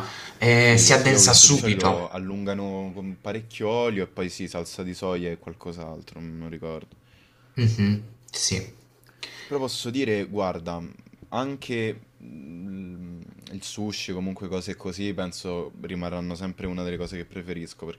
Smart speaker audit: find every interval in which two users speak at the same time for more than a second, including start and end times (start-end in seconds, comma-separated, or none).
0.5-2.0